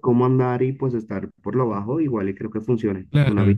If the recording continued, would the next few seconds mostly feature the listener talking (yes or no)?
yes